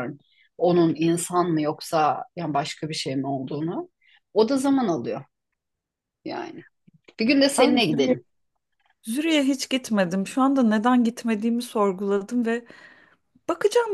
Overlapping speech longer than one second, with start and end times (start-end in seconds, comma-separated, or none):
none